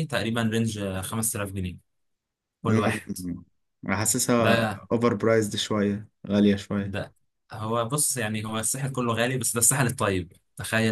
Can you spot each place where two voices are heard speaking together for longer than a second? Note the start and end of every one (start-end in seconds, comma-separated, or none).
none